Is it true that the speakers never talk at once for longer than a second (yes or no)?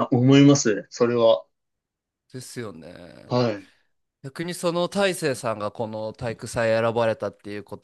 yes